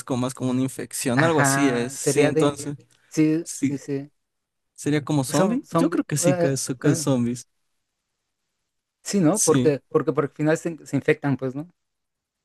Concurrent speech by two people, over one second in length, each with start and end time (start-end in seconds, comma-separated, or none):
1.1-2.6, 5.3-7.0